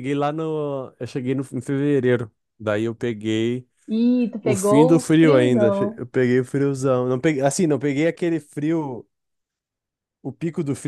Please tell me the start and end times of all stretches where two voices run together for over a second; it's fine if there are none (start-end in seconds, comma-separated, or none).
4.4-6.0